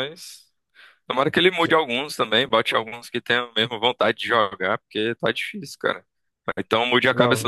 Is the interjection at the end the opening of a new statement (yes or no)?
no